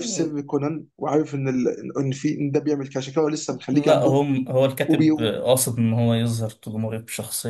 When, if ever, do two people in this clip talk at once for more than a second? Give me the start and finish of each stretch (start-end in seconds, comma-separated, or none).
none